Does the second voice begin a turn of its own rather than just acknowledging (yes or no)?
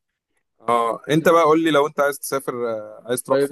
yes